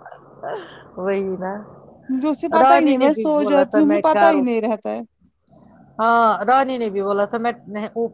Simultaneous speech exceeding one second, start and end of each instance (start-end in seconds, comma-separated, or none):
2.6-4.4